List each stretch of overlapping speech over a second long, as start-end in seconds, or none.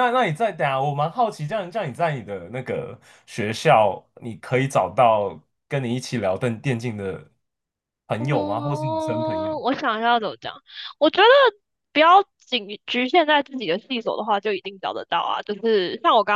8.2-9.5